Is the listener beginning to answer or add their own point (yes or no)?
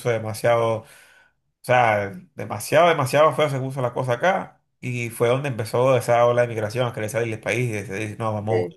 no